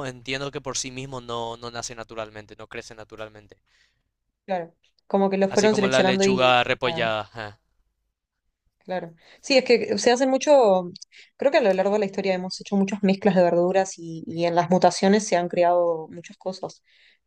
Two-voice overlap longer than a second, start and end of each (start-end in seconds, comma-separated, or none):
5.5-7.1